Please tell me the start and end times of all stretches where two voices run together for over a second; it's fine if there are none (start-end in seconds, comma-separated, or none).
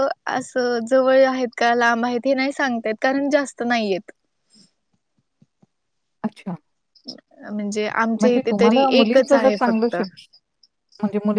8.2-9.9